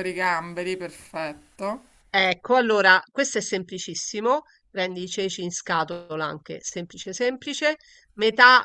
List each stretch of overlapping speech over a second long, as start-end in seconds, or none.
none